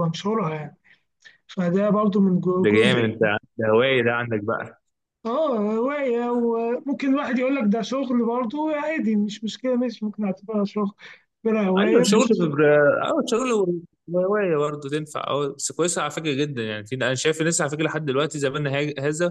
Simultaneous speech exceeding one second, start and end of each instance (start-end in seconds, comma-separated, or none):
none